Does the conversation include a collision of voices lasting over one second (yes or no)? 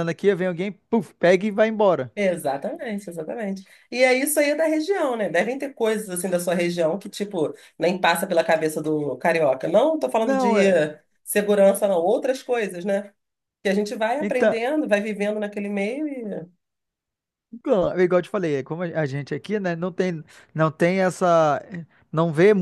no